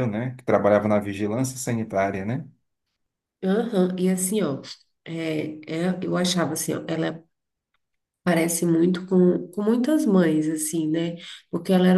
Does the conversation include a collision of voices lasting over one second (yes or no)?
no